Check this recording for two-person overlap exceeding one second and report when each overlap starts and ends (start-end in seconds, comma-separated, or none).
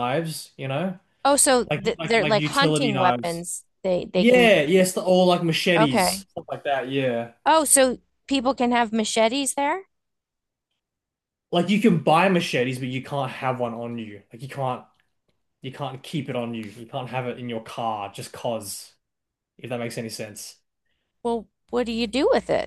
1.7-3.4